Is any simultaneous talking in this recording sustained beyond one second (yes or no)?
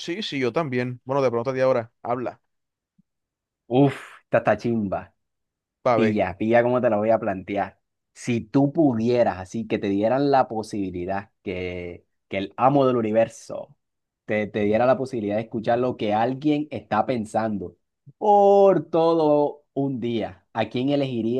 no